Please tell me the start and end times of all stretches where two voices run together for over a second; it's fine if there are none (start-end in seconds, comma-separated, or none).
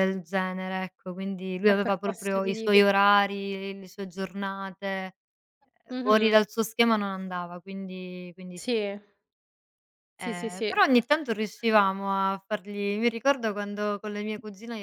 1.6-2.9